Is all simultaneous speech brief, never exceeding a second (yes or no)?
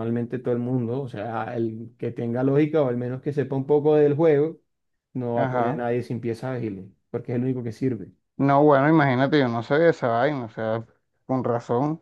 yes